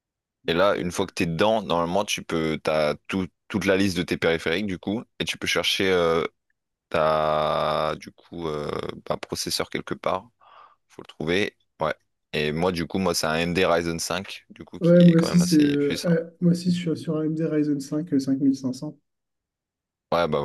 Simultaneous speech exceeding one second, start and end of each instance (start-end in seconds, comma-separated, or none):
14.8-16.2